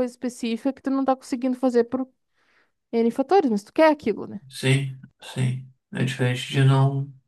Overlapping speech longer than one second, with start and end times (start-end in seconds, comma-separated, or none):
none